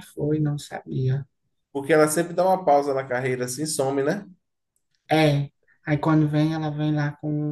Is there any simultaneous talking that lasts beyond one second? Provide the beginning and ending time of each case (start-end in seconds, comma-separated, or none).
none